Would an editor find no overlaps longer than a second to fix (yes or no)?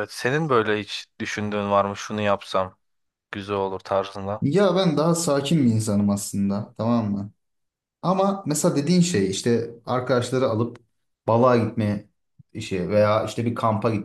yes